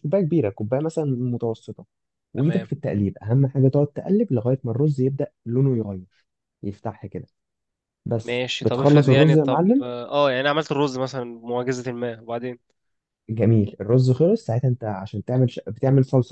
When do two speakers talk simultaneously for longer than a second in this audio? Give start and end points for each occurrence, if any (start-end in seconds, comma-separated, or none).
8.2-9.8